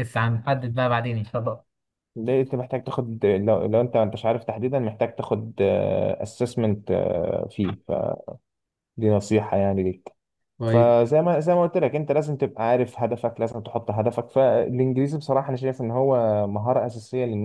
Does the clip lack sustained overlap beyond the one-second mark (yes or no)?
yes